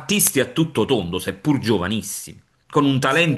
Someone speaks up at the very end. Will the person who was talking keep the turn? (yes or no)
yes